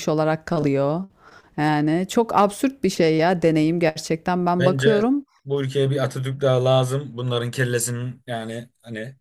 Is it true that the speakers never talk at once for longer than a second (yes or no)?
yes